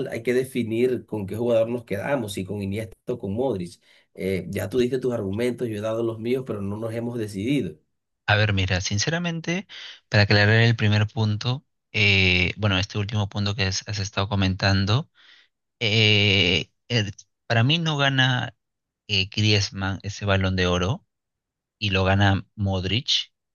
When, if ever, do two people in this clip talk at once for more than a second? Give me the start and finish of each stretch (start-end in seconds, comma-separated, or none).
none